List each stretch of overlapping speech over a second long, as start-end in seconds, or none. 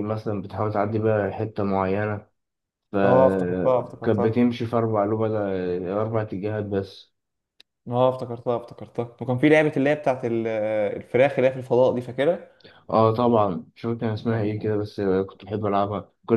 3.0-4.5